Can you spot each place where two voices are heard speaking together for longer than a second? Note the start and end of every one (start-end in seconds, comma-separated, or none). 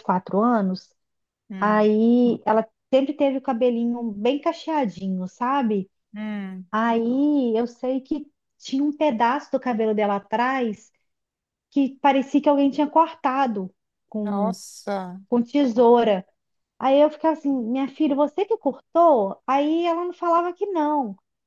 none